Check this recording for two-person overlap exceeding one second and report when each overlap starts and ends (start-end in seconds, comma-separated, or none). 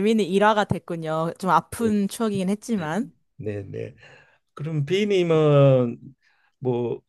none